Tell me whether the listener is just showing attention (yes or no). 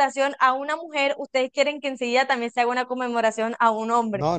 no